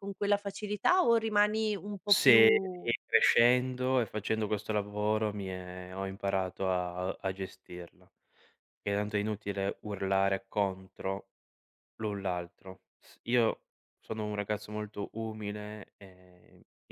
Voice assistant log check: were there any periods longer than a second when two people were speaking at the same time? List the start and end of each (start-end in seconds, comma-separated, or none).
none